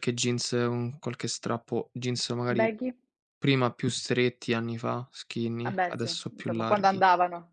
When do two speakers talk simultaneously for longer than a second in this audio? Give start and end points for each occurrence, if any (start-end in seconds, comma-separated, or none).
5.6-7.0